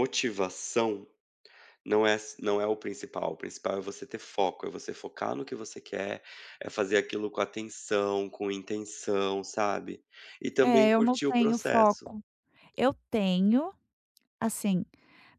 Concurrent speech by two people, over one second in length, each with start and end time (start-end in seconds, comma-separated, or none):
10.6-12.1